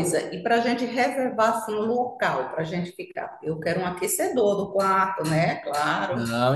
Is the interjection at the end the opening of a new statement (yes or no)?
yes